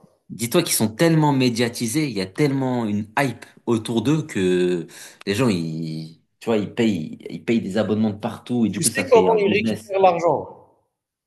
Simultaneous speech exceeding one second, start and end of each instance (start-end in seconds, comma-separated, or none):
8.7-9.9